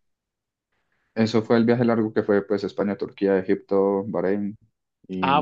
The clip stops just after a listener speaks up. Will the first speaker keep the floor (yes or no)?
no